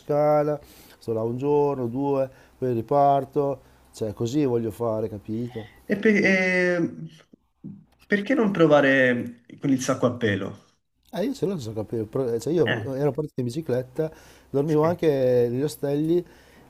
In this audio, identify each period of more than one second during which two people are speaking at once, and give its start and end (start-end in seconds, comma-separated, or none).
none